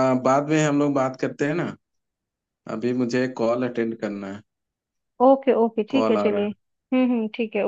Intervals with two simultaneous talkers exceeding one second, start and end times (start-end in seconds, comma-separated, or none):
none